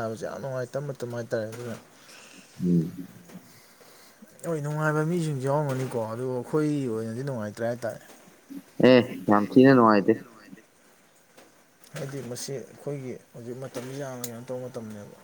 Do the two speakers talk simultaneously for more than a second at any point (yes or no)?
no